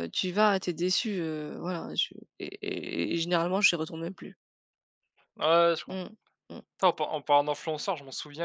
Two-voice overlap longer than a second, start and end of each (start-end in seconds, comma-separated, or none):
none